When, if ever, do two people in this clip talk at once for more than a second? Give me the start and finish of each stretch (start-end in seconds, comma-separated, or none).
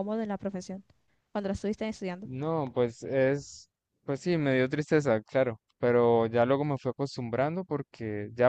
none